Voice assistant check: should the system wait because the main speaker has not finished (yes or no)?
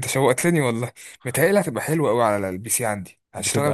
yes